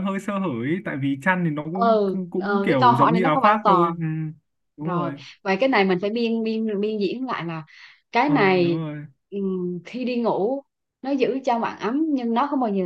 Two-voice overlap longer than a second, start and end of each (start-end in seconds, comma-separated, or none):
1.7-3.9